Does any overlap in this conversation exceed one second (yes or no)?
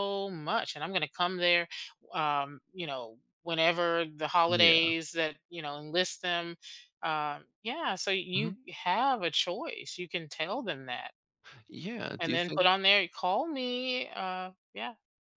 no